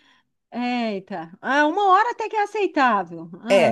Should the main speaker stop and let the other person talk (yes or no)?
yes